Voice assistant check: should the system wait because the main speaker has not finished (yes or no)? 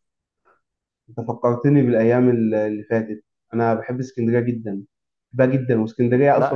yes